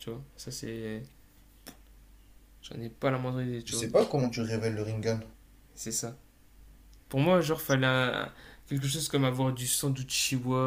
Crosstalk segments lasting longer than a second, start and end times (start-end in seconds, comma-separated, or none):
none